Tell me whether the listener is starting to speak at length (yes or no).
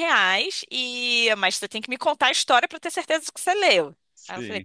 no